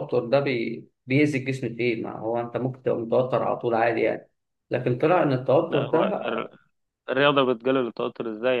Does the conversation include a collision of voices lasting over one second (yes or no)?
no